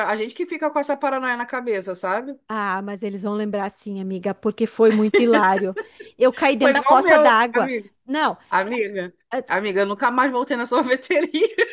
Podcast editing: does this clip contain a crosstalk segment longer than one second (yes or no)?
yes